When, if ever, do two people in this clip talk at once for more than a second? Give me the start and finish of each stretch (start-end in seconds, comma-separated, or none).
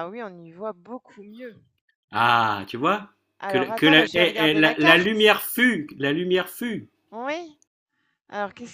3.5-5.1